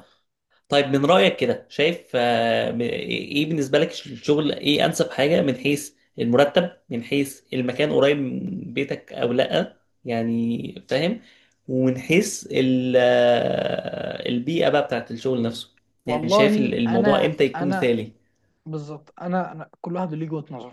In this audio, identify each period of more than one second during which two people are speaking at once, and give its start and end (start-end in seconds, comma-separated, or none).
16.1-17.9